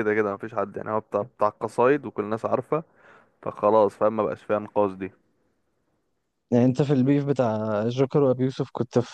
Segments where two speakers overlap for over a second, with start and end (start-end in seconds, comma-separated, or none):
none